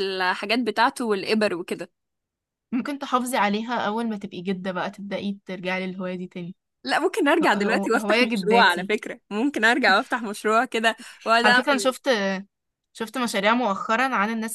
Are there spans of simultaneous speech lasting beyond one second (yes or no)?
yes